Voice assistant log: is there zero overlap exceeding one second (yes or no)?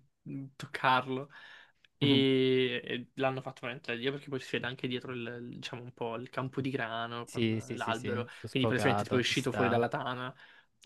no